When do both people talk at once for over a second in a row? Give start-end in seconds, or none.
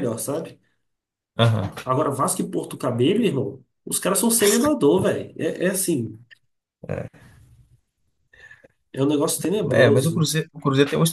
none